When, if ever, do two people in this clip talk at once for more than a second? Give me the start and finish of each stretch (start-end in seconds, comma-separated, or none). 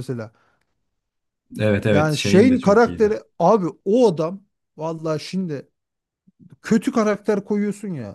1.9-3.2